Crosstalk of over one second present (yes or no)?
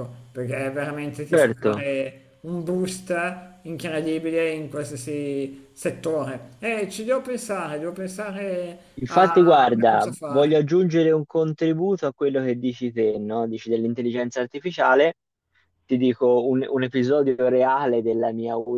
yes